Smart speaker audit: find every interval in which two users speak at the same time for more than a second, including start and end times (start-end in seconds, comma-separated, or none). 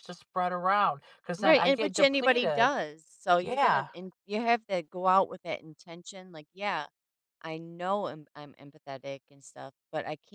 1.4-2.7